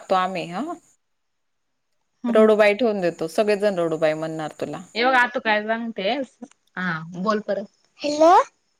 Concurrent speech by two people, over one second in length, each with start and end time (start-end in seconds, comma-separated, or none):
none